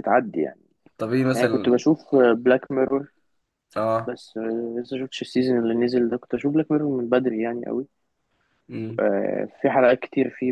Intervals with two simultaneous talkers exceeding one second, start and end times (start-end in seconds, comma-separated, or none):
none